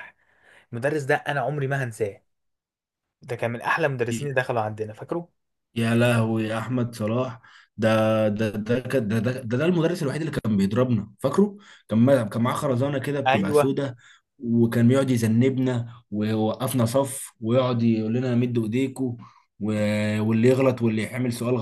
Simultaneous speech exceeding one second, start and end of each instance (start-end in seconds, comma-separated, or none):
none